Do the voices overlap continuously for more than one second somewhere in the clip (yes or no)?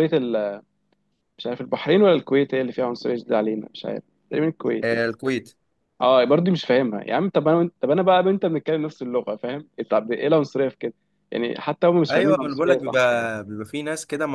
yes